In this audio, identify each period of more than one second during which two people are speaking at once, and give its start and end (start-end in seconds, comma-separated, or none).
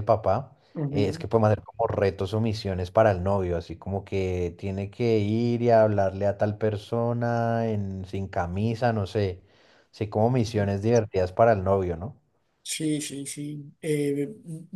none